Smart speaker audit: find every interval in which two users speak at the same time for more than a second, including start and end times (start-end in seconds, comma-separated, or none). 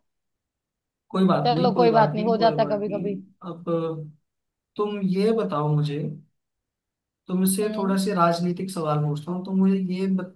1.4-3.2